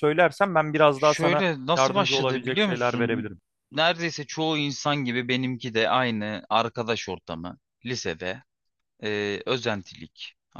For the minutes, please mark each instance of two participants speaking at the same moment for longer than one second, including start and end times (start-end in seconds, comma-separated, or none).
0.9-3.3